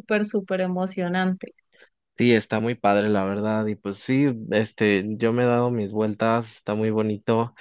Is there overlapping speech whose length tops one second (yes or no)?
no